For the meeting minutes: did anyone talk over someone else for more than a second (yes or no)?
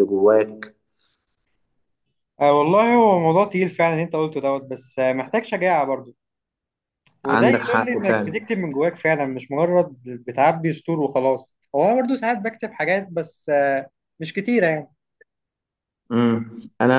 yes